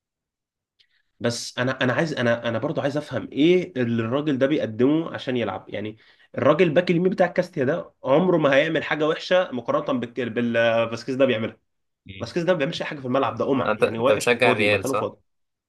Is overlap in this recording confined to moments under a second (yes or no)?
no